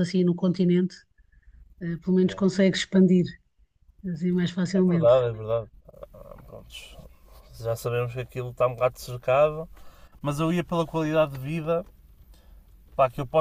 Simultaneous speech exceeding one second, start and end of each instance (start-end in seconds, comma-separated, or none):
none